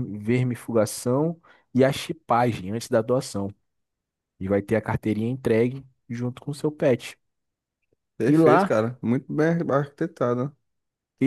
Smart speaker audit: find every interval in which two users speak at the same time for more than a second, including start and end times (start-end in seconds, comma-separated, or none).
none